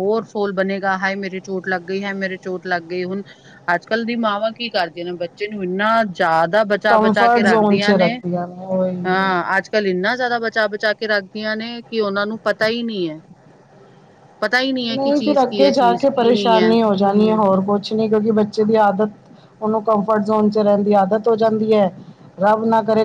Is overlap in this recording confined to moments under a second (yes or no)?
no